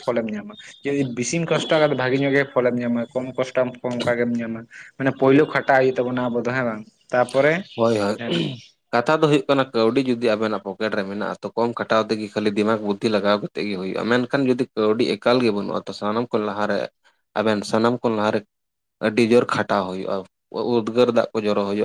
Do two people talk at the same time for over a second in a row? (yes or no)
no